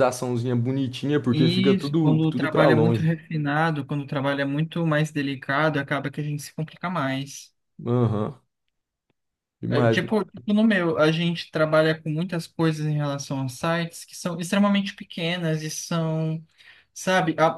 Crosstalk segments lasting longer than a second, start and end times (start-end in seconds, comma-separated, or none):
1.3-3.1